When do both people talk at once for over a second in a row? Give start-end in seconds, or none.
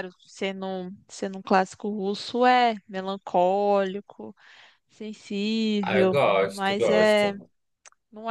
5.8-7.3